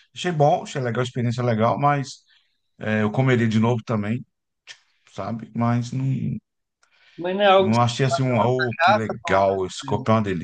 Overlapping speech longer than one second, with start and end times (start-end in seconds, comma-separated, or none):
7.6-9.5